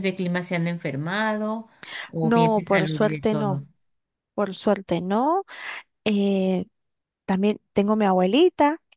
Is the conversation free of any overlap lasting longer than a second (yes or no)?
no